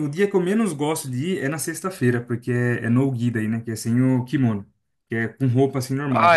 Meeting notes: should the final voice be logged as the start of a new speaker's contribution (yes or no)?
yes